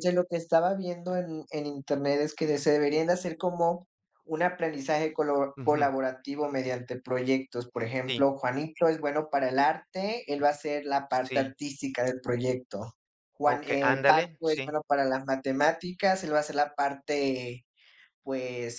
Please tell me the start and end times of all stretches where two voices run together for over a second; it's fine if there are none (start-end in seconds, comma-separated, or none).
13.4-14.8